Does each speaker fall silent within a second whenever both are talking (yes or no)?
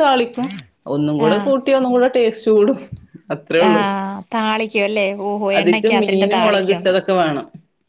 no